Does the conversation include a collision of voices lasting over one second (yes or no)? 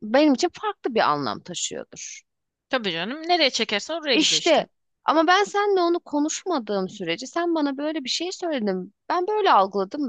no